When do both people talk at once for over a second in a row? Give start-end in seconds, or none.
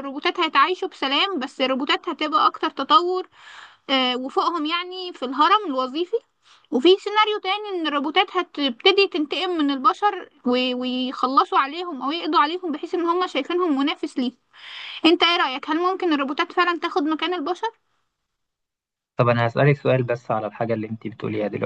none